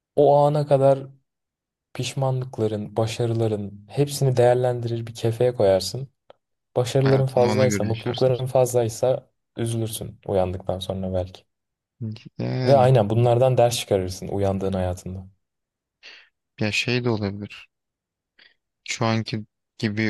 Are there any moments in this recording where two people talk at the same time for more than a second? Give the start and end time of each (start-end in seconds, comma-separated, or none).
7.0-8.4